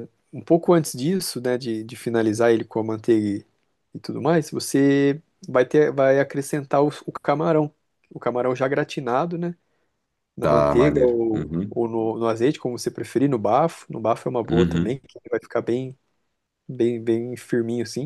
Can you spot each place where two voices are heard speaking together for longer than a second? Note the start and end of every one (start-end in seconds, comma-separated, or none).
10.4-11.8